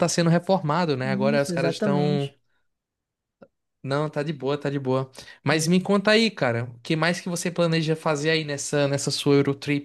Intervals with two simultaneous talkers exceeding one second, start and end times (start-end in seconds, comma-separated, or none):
1.0-2.3